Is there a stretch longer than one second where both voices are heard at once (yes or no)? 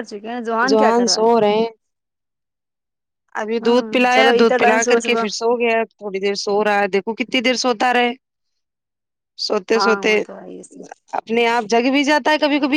yes